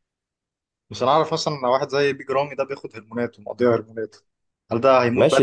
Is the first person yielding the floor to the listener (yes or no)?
yes